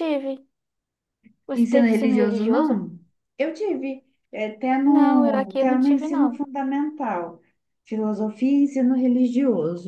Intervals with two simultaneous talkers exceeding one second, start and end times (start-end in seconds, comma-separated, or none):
1.5-2.8, 4.8-6.4